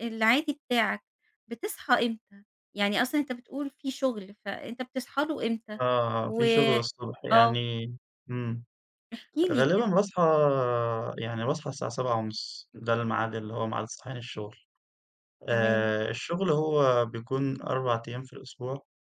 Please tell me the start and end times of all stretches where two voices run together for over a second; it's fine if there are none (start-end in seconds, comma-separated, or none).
none